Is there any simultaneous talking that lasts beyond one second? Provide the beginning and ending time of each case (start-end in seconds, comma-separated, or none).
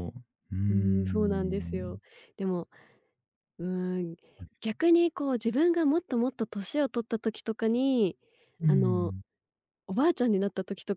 0.7-2.0